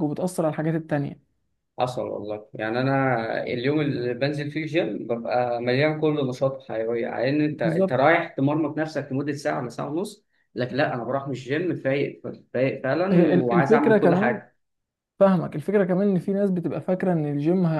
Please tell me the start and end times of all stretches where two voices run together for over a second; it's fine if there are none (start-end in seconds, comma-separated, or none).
13.1-14.4